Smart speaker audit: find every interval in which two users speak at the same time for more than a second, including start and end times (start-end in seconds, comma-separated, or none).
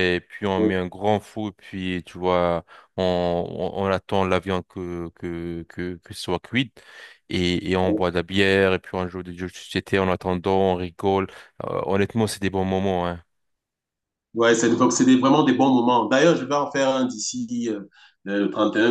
none